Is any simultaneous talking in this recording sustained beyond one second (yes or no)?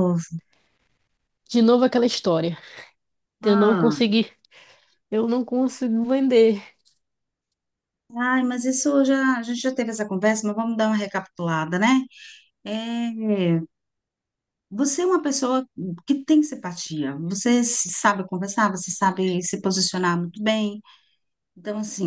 no